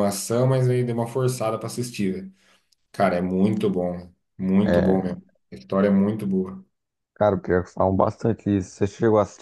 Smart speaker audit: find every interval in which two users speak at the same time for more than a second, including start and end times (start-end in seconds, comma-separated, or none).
none